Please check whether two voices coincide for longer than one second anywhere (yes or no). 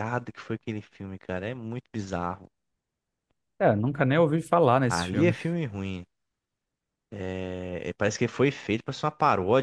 no